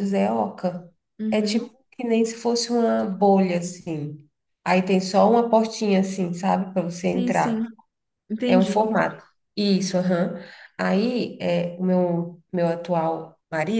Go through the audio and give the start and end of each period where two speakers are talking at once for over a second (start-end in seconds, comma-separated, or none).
none